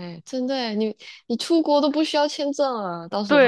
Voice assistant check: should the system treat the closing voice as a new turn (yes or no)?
yes